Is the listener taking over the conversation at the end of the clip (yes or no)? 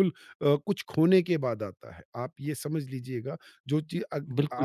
no